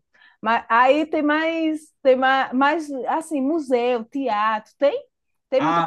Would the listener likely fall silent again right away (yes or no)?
no